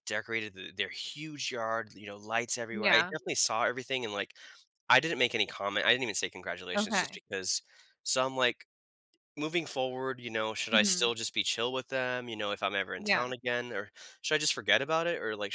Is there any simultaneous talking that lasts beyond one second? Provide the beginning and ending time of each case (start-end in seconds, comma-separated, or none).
none